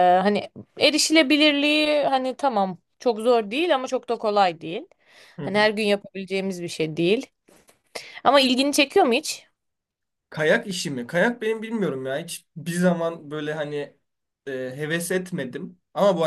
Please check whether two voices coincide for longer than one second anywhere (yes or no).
no